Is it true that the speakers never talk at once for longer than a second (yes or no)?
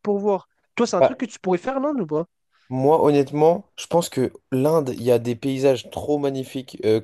yes